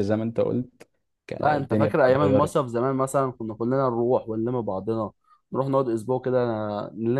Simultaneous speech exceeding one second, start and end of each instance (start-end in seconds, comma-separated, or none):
1.4-2.7